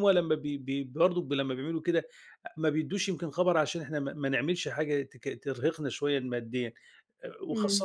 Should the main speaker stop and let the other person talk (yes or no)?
no